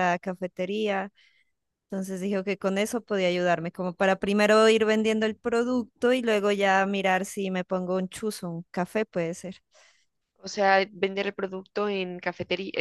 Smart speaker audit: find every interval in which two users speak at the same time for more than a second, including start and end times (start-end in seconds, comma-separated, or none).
none